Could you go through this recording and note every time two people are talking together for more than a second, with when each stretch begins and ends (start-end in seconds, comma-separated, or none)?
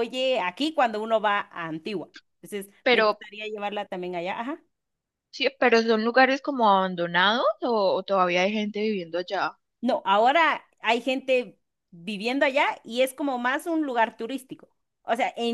none